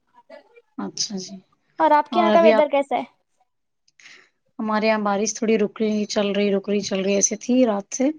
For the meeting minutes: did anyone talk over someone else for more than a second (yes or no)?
no